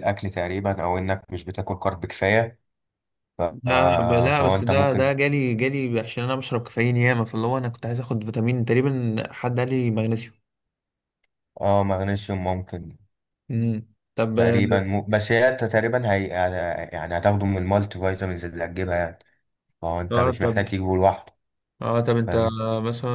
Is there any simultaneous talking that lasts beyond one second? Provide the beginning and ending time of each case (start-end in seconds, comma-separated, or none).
3.6-5.1